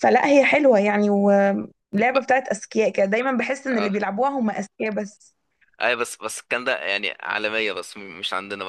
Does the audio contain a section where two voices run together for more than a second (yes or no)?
no